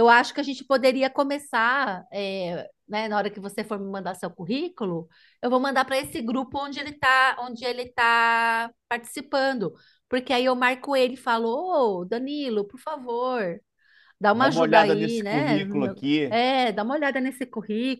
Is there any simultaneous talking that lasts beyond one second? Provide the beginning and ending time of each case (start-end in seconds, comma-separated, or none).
14.3-16.4